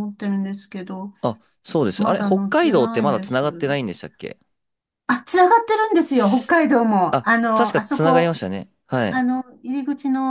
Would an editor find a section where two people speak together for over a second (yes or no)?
yes